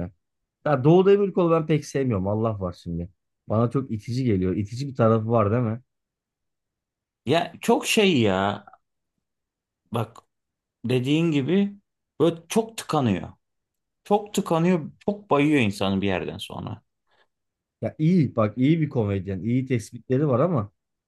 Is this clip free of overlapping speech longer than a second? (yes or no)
yes